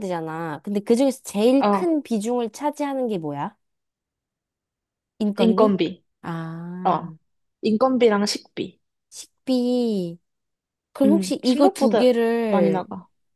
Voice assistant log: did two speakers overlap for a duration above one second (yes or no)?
yes